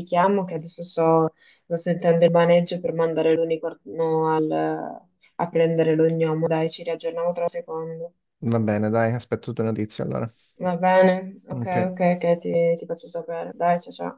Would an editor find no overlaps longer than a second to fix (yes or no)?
yes